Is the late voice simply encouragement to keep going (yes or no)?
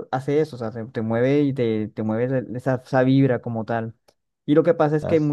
yes